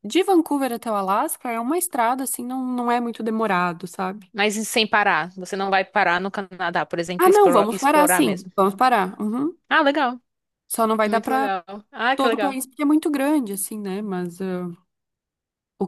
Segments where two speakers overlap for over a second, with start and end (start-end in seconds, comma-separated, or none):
7.2-8.5